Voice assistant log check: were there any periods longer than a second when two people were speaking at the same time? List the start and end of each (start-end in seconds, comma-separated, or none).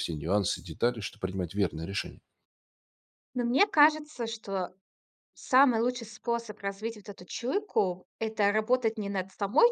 none